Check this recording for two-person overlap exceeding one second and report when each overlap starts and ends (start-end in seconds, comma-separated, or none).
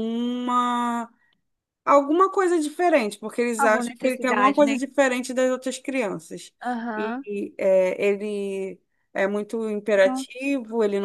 3.6-4.8